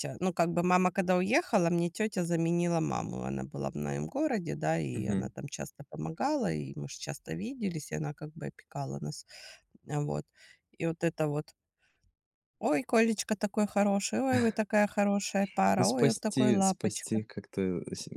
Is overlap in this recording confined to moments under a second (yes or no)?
no